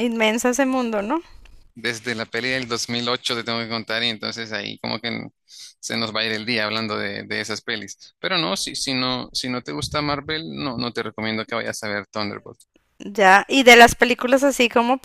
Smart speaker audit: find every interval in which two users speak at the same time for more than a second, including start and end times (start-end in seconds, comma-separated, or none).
none